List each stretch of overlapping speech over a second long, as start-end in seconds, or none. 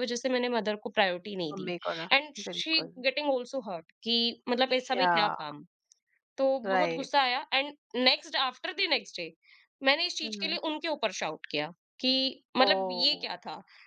none